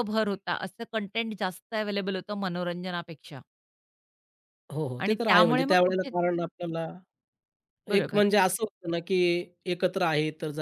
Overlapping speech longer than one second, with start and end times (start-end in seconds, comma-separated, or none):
5.0-6.5